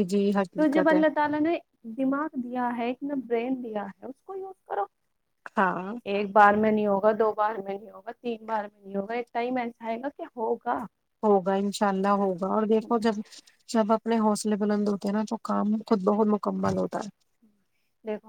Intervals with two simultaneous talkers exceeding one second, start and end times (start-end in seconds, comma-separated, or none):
none